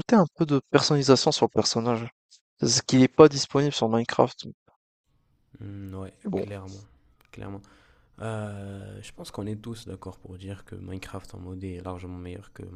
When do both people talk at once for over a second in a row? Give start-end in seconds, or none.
none